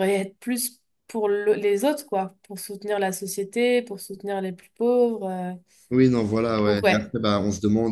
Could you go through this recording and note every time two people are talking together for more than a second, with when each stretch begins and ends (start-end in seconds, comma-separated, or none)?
none